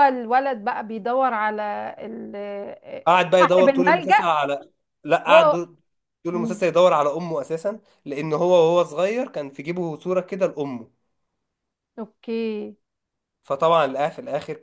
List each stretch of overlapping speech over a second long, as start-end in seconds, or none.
3.1-4.3